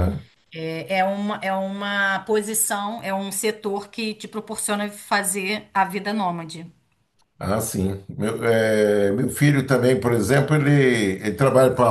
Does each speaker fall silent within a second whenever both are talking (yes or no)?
yes